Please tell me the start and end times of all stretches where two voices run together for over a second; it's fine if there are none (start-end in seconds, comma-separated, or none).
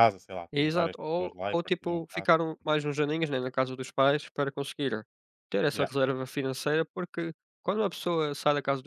0.5-2.3